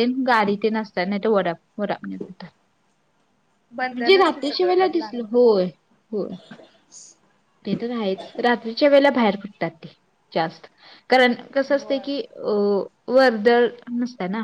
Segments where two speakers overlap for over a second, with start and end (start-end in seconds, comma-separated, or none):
3.9-5.4